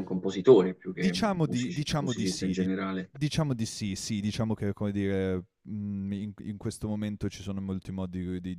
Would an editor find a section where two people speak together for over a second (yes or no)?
yes